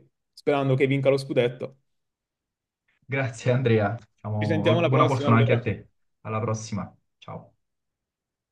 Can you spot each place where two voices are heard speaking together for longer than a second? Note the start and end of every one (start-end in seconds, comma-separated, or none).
4.4-5.7